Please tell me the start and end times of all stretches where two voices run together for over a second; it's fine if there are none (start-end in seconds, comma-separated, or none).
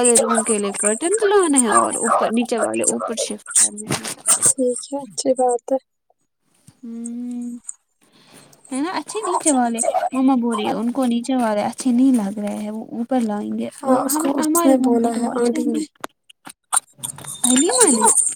13.8-15.8